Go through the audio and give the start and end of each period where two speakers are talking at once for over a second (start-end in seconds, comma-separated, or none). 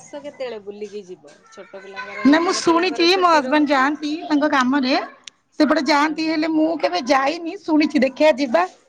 2.3-3.9